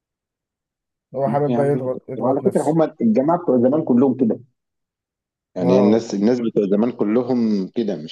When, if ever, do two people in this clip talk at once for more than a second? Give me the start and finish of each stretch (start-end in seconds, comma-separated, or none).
1.3-2.8